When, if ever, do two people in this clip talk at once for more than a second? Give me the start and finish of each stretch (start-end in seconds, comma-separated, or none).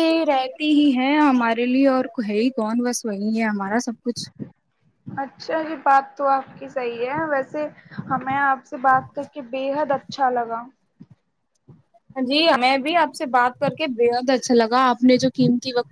none